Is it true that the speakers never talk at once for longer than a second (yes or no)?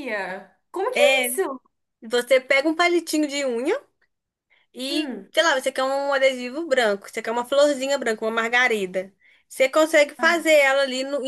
yes